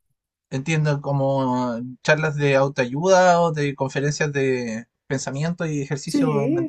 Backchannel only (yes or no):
no